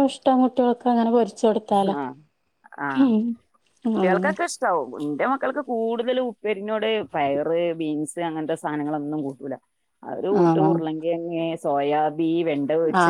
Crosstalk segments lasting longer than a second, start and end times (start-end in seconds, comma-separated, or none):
none